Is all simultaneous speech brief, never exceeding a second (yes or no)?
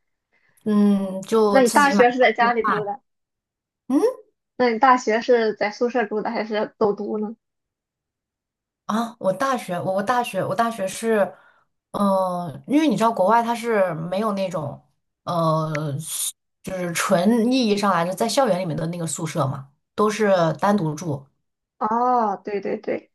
no